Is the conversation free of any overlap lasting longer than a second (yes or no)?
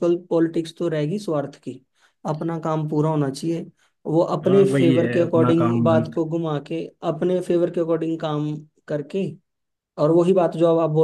no